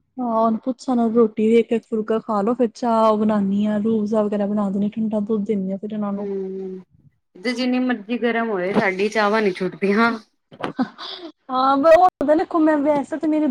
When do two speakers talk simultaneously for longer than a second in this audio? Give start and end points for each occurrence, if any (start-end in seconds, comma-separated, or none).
none